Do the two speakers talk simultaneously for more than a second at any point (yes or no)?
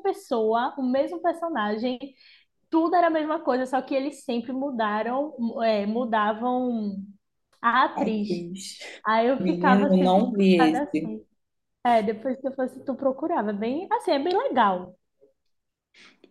yes